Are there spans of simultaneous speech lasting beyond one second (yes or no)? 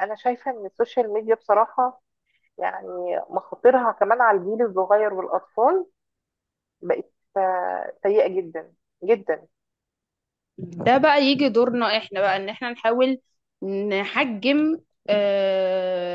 no